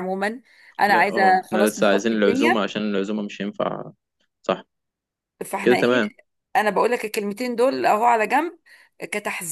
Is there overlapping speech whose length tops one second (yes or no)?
yes